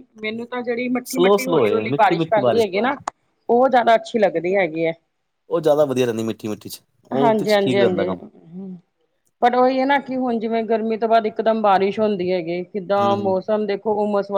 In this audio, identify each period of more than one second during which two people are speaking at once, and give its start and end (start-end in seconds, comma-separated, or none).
1.1-2.4